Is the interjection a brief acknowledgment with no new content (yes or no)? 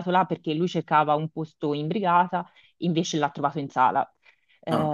yes